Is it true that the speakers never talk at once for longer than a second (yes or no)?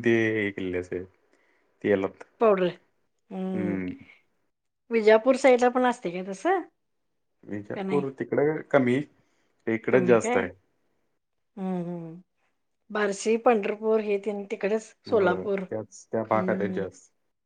no